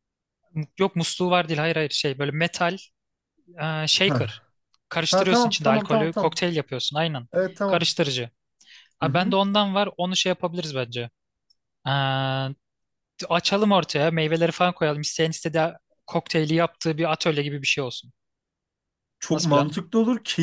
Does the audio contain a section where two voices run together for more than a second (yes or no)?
yes